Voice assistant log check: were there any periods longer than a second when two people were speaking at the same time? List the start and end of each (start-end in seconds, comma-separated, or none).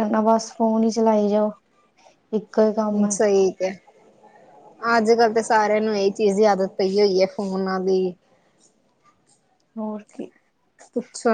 none